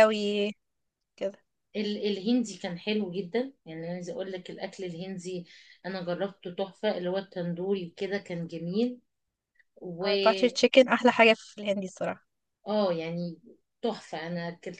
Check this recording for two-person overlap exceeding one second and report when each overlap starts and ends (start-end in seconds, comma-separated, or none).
none